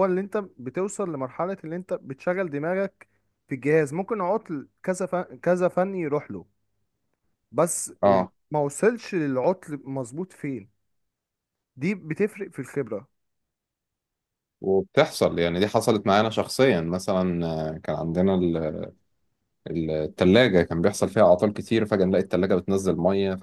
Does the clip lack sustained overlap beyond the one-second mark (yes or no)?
yes